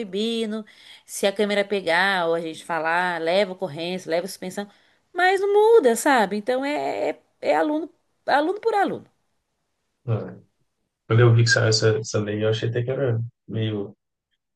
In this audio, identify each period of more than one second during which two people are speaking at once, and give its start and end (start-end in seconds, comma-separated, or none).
none